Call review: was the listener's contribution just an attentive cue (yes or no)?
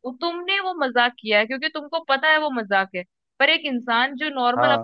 yes